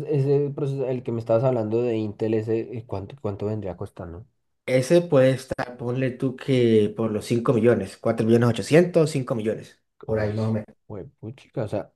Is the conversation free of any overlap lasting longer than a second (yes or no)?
yes